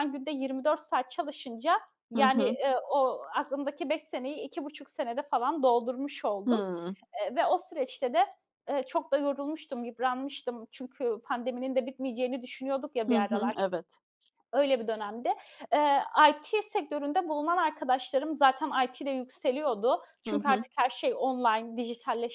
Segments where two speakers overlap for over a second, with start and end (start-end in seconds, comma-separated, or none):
none